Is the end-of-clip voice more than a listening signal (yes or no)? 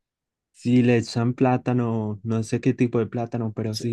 yes